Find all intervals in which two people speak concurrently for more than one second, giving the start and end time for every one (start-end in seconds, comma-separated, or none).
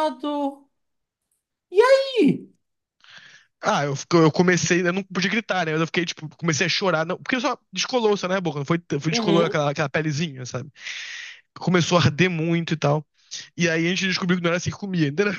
none